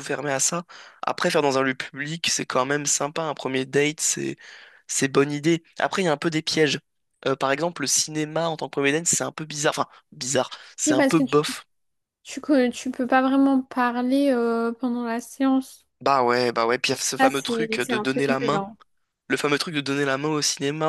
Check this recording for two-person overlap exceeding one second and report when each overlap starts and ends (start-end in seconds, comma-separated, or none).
17.2-18.6